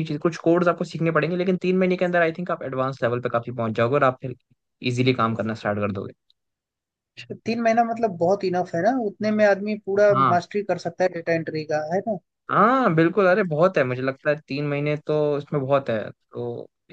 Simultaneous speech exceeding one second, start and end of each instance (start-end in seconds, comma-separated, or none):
none